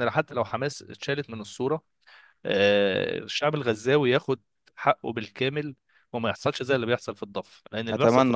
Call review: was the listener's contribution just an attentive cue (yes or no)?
yes